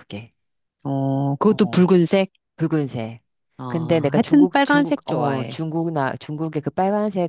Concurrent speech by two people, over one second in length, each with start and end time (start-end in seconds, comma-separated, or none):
4.1-5.6